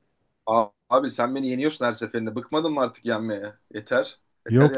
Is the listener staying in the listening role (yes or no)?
no